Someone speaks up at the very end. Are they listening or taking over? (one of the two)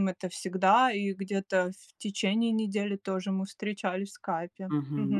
taking over